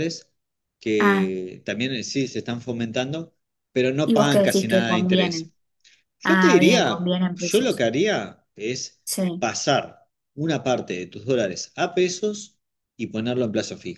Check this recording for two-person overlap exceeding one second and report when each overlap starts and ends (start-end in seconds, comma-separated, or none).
4.0-5.5, 6.2-7.8